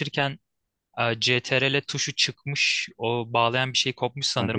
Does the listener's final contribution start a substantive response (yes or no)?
no